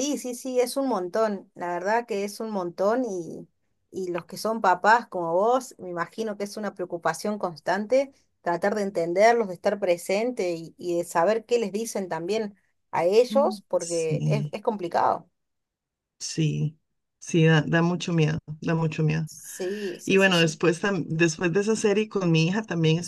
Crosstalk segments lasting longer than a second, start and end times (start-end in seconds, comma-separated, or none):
13.3-14.5